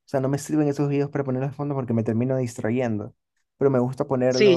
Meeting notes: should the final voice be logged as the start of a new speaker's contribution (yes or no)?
yes